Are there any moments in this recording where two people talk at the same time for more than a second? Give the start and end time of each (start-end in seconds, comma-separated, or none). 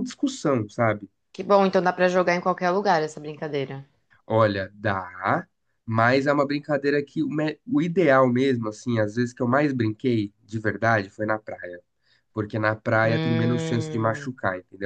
13.0-14.3